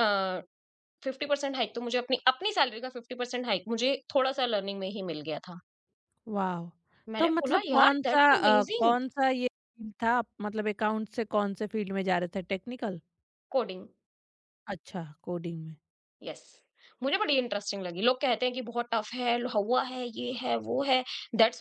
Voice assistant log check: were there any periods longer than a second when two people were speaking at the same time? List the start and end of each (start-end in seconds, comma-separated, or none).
7.2-8.9